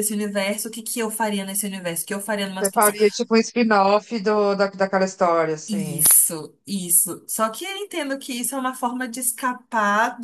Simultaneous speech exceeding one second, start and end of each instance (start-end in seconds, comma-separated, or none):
none